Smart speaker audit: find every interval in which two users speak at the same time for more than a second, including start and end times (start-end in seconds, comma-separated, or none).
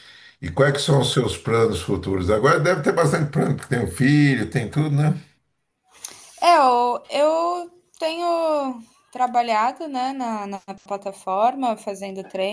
none